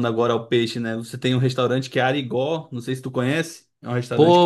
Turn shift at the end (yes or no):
yes